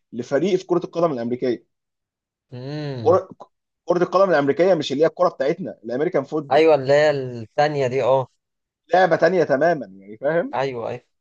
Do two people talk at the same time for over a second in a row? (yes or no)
no